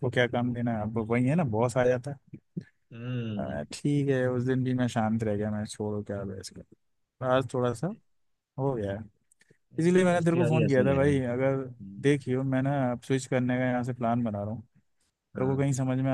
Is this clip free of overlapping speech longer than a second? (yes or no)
no